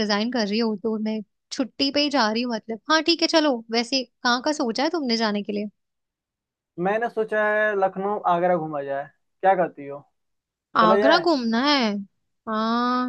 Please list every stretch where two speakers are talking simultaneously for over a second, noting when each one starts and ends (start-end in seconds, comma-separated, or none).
none